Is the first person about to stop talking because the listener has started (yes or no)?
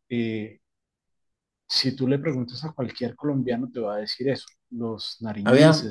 no